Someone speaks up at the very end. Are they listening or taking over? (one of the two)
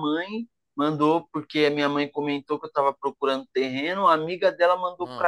listening